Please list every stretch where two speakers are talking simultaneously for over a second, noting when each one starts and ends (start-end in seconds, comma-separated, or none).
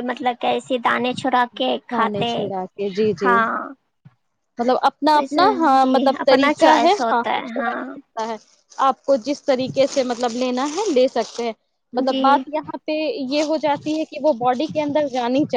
5.1-7.8